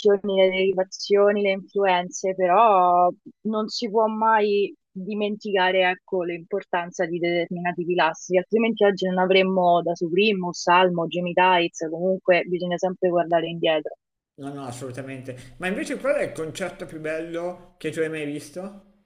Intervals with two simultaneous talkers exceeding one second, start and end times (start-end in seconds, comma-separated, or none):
none